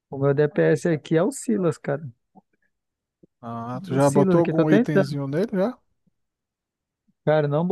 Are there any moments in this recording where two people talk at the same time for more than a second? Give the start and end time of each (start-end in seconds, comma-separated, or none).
3.9-5.2